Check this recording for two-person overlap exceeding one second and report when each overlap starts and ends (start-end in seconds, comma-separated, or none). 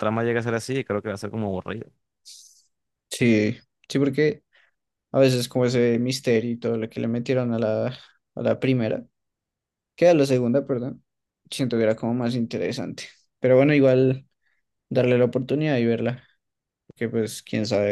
none